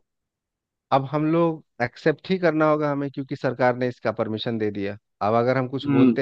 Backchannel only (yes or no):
yes